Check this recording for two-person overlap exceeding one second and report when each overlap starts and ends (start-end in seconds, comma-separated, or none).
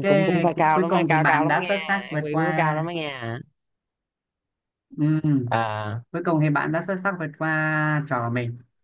0.6-2.8